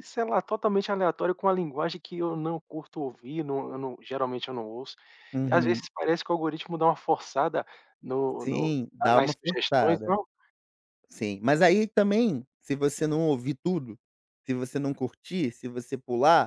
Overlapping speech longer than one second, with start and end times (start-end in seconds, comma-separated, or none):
8.4-10.1